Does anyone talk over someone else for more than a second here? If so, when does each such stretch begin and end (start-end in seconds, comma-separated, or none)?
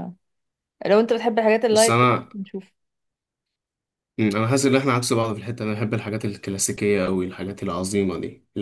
none